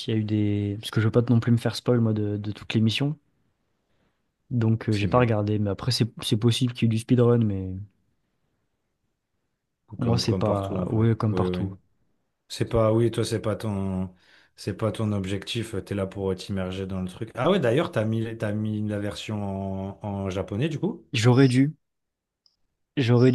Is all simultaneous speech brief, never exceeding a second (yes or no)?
no